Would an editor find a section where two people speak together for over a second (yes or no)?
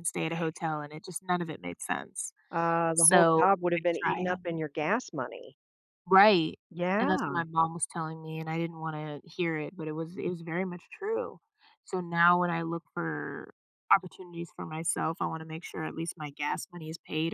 yes